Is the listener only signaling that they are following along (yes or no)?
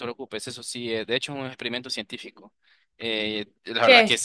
yes